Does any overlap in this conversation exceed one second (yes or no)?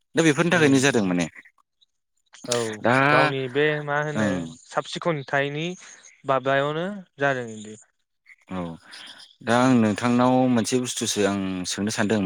no